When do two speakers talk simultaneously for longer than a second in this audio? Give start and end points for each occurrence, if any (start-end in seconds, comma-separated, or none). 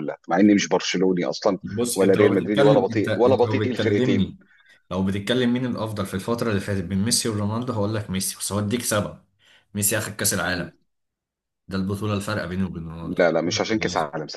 1.9-4.3